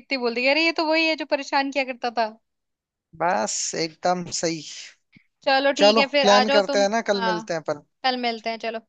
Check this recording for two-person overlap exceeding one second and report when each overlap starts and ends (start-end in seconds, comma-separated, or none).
5.8-7.5